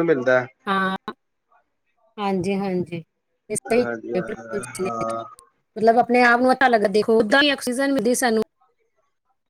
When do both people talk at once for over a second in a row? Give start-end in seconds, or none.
3.8-5.1